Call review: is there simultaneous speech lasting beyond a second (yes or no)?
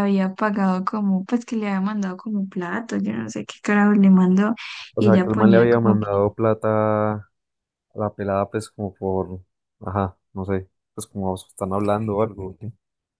yes